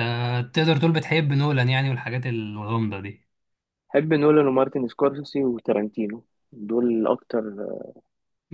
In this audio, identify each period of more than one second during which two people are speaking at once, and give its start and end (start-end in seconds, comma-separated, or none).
none